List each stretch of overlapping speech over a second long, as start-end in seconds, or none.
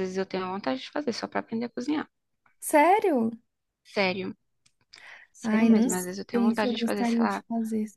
5.4-7.4